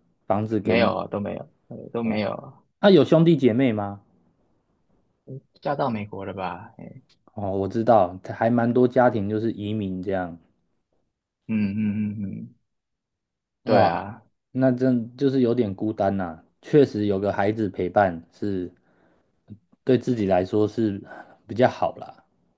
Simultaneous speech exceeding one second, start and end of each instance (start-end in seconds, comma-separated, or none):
none